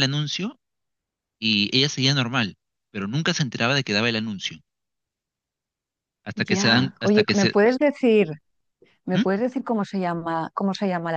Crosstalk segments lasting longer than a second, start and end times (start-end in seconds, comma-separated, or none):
6.3-7.6